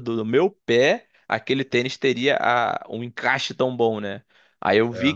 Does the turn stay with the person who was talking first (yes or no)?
yes